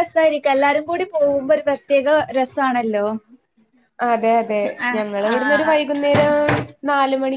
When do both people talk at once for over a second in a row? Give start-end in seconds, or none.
none